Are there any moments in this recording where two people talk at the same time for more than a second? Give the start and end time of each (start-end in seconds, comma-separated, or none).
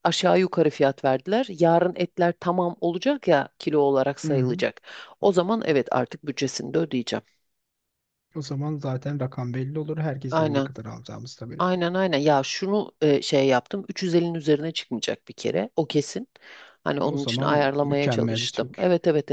17.0-18.8